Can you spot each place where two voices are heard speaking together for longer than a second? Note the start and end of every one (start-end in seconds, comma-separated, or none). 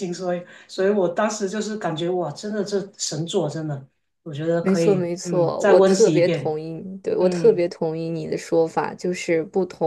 4.6-6.6